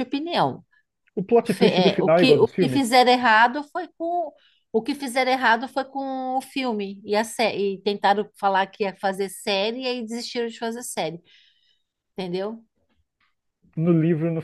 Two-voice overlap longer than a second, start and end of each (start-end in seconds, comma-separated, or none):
1.4-2.9